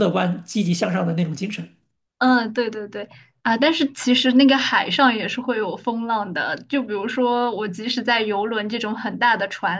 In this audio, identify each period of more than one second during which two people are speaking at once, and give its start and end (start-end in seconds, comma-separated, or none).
none